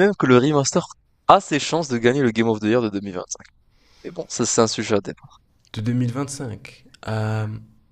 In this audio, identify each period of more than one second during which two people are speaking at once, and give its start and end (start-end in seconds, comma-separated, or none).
none